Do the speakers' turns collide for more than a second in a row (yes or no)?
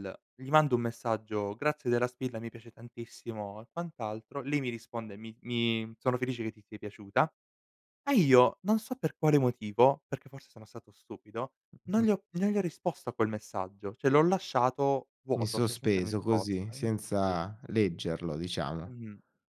yes